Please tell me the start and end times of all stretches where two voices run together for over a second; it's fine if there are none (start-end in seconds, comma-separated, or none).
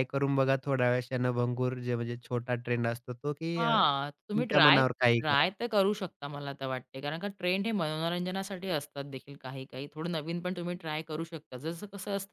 3.6-5.5